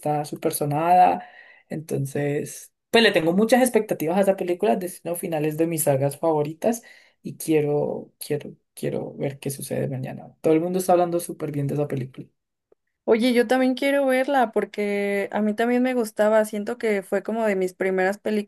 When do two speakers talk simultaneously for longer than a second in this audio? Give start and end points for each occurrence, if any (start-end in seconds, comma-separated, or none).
none